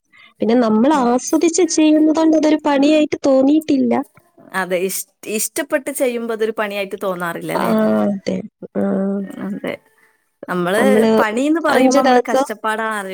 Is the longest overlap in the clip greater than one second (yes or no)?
no